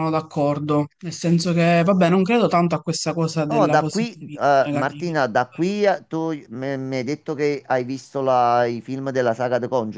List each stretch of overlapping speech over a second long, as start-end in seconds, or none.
3.5-5.7